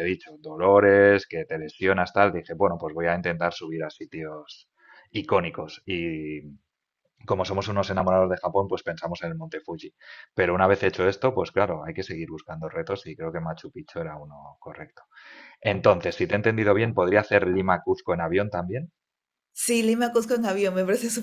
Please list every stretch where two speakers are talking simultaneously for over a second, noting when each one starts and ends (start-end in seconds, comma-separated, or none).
none